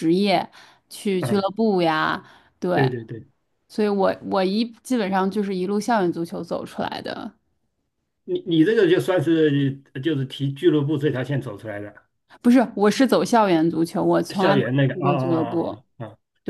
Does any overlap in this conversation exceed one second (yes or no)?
yes